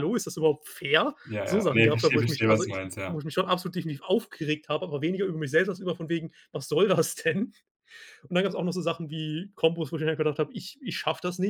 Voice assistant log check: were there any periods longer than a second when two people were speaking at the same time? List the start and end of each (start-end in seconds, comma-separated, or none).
1.2-3.2